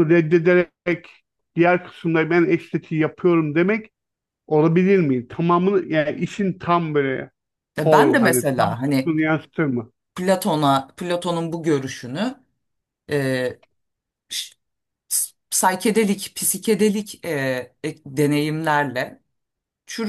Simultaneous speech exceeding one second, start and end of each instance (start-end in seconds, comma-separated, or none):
7.8-9.2